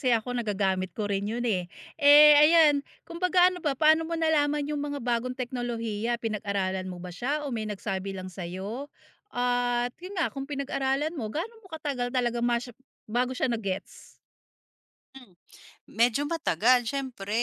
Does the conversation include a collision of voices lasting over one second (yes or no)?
no